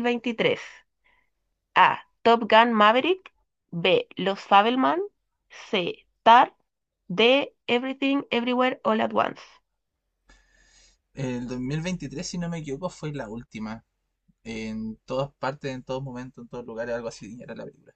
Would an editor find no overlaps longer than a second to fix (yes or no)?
yes